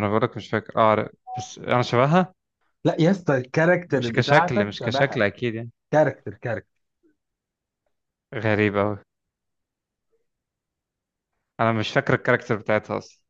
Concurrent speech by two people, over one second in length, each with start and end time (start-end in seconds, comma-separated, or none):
4.0-5.2